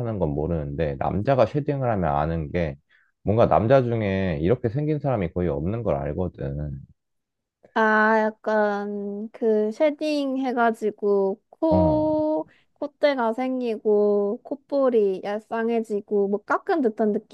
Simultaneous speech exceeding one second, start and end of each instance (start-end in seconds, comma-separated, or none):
none